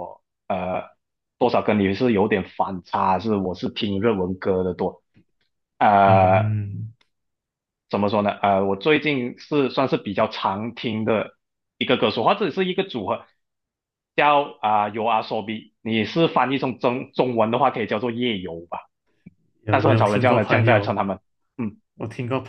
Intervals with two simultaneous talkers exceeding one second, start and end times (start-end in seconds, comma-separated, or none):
19.7-21.0